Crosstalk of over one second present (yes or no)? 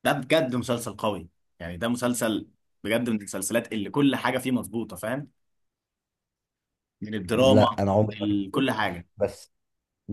yes